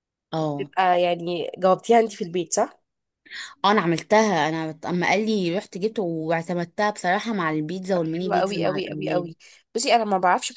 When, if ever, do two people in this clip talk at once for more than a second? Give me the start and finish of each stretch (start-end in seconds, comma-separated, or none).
8.0-9.3